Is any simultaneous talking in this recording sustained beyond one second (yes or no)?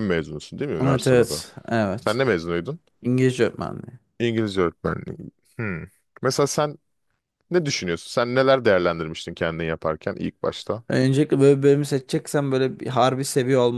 no